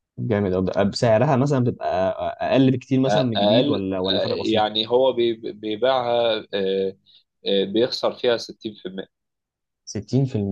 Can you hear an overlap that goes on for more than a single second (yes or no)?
yes